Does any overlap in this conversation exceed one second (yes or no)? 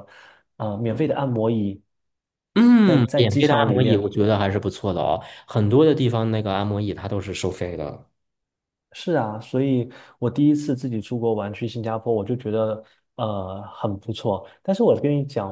yes